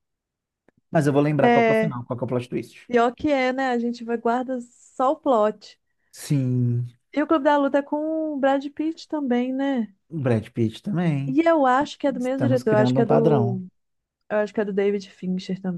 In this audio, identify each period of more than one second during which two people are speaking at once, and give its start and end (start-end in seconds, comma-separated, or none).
12.2-13.6